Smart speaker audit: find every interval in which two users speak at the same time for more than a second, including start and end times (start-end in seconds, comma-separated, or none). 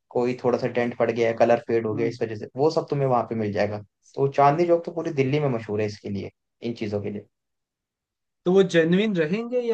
none